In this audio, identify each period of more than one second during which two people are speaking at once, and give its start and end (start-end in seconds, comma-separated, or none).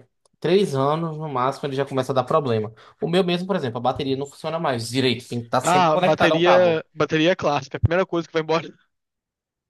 5.6-6.8